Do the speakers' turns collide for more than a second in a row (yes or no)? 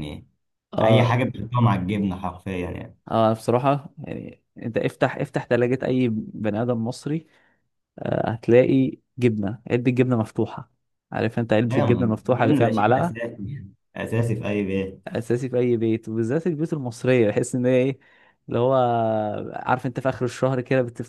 yes